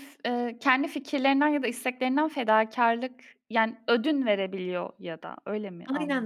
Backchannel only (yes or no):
no